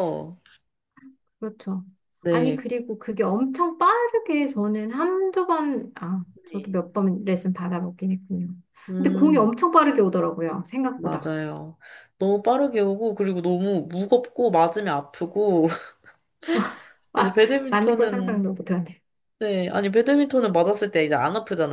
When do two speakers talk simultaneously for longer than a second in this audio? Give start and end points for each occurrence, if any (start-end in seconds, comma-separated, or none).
17.1-18.5